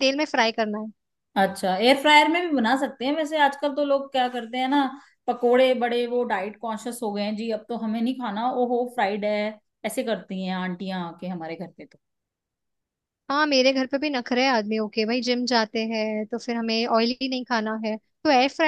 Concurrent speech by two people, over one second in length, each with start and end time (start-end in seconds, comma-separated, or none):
none